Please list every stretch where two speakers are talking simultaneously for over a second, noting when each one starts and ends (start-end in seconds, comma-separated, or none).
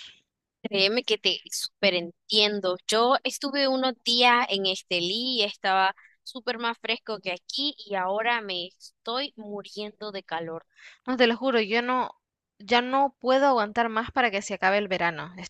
none